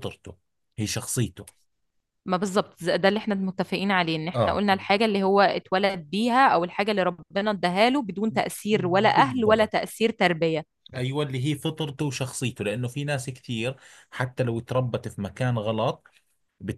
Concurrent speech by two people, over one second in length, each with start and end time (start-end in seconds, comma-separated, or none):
none